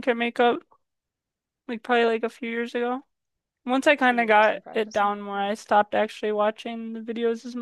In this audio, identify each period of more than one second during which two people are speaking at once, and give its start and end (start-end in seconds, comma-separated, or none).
4.0-5.6